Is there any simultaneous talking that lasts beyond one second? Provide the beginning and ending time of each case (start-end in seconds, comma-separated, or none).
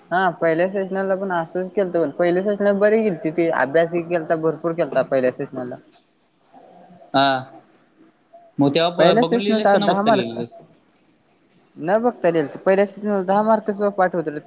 9.0-10.4